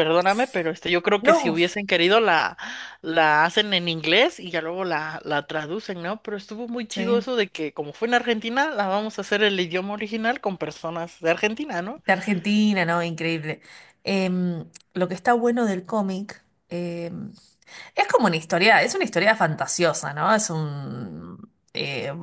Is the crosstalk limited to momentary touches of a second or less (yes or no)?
yes